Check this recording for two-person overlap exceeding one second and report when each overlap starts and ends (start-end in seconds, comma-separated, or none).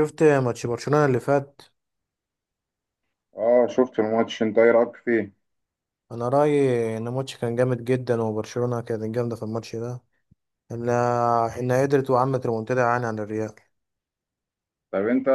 none